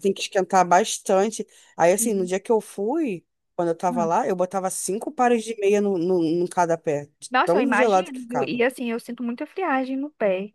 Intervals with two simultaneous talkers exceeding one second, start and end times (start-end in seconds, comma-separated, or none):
7.3-8.6